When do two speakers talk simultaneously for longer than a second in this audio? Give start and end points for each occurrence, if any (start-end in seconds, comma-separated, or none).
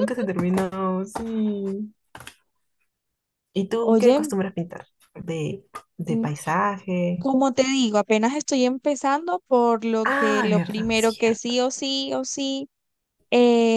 10.0-11.6